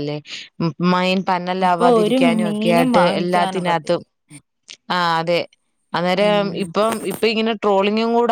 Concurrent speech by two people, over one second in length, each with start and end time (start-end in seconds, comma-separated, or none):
1.6-4.0